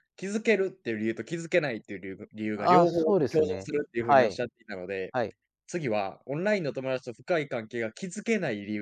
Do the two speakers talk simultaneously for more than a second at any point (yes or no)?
yes